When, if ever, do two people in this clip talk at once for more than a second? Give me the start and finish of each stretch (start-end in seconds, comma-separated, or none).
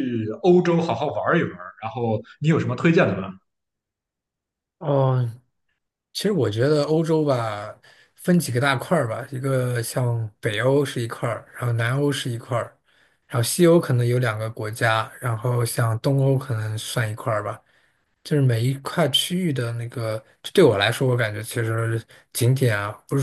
none